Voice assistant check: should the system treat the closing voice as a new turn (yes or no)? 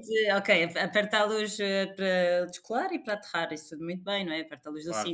no